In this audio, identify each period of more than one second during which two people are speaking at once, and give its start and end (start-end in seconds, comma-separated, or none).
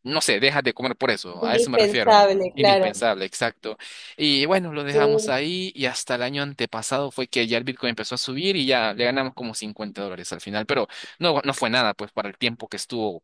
1.4-3.0